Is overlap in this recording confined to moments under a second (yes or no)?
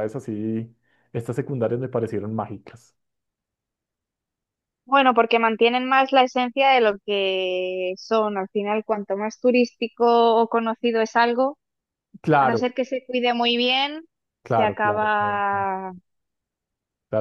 no